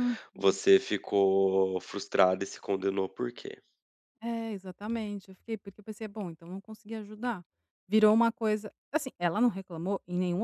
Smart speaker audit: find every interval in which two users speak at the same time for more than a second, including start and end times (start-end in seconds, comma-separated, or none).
none